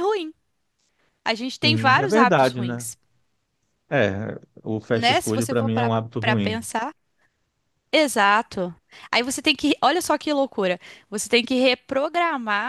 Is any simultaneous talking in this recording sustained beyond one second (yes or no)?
yes